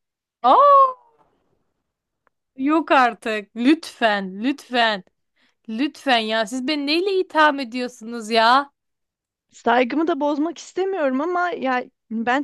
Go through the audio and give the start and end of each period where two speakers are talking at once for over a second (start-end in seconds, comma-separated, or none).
none